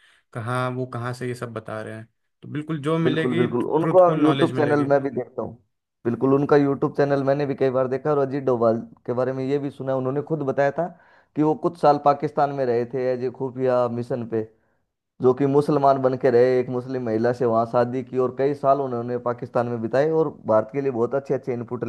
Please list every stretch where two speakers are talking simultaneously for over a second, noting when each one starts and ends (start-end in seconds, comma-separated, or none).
3.0-4.9